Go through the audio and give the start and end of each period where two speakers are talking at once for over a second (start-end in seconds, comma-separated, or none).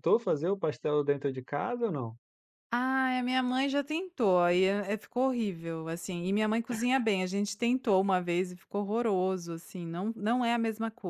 none